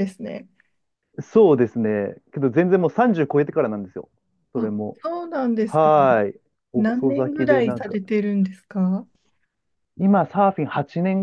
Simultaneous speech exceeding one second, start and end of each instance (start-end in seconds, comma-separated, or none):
6.7-8.0